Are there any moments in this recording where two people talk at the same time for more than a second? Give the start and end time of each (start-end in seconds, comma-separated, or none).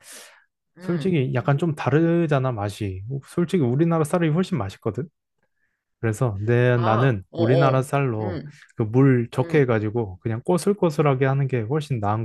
6.8-8.5